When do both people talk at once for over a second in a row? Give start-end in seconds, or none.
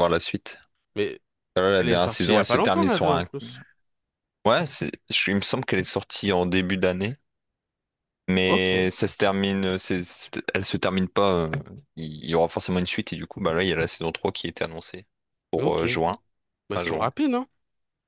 1.8-3.3